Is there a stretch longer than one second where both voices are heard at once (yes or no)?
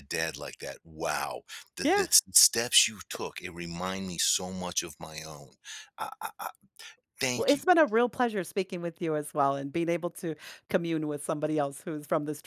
no